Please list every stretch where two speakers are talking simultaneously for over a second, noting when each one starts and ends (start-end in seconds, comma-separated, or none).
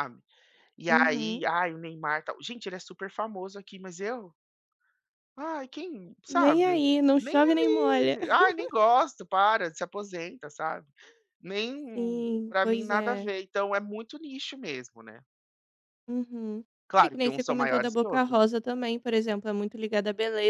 6.3-8.2, 11.9-13.3, 16.9-18.4